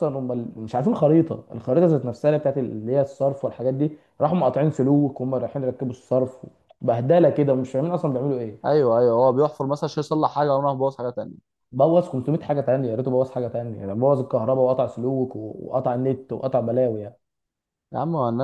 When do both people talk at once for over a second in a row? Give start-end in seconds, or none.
none